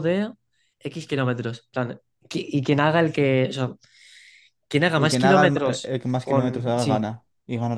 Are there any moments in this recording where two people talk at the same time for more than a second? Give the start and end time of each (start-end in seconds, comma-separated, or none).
5.0-7.1